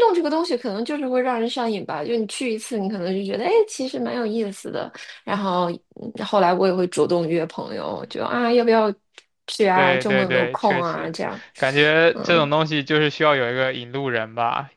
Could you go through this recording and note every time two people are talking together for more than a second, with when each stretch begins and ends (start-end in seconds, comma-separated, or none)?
9.7-11.1